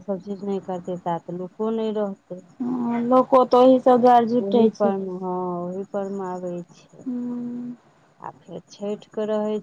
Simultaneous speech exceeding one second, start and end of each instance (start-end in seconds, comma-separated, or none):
none